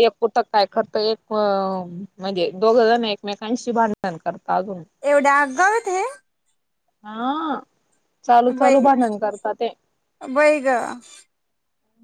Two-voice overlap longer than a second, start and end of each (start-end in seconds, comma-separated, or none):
none